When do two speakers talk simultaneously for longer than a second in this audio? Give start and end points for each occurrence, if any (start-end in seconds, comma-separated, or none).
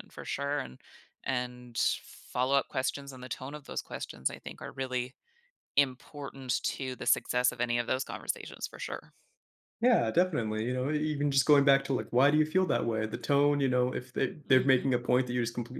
none